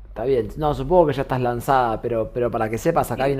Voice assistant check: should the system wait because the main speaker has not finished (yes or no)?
yes